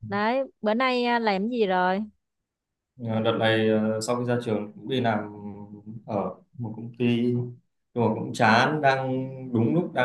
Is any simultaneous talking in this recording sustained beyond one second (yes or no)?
no